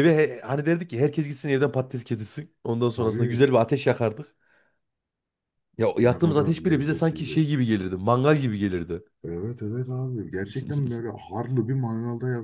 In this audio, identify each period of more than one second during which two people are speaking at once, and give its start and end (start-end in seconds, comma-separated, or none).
6.0-7.4